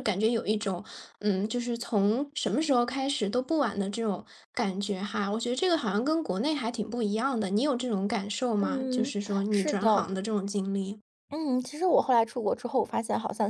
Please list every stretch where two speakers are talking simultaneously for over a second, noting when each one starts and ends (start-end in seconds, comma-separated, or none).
8.6-10.0